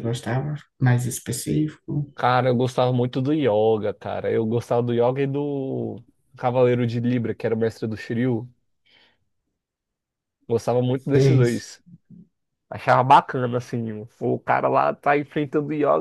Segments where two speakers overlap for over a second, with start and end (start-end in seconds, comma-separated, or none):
none